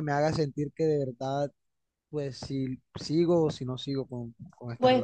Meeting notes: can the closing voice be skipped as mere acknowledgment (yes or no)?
no